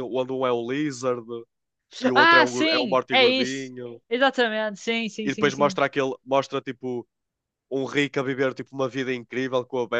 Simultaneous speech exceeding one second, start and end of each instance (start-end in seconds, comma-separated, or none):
2.1-3.7